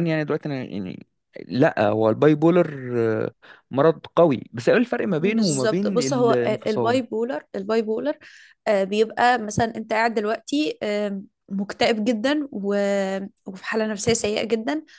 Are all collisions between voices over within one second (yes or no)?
no